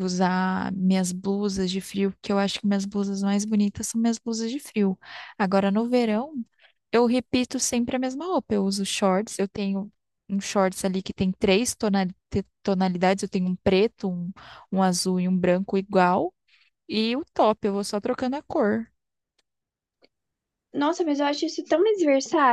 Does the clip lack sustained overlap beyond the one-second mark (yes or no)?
yes